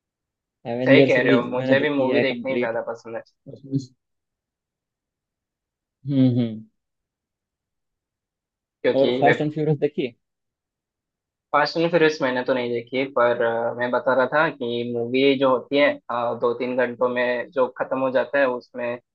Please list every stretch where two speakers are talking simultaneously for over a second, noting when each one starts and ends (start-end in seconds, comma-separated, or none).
0.9-2.8